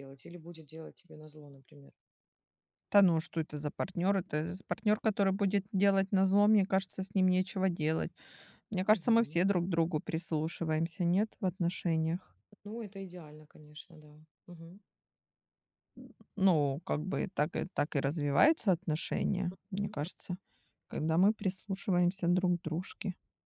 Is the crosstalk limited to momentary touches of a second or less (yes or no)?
yes